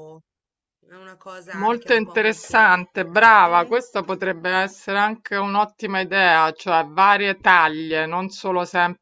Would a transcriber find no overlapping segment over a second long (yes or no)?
no